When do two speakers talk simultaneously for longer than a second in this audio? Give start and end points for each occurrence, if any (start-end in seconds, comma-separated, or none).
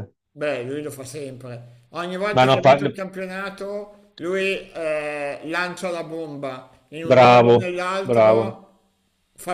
7.0-8.6